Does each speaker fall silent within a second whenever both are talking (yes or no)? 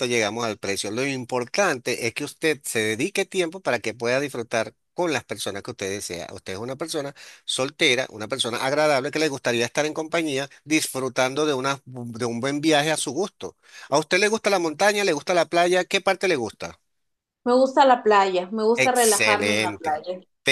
no